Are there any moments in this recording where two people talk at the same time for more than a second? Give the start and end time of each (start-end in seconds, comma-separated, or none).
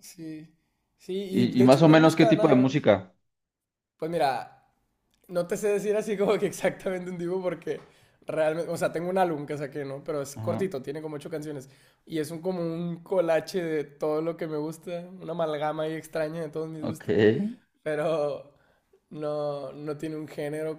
1.3-2.9